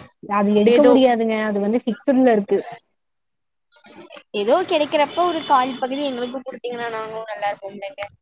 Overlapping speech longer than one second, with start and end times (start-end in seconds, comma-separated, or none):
none